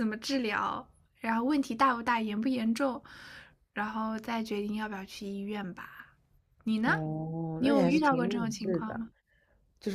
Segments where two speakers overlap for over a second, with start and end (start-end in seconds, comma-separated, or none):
7.6-9.0